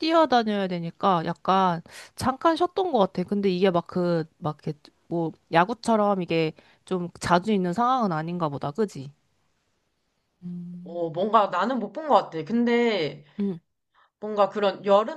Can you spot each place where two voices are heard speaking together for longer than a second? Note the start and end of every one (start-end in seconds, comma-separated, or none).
none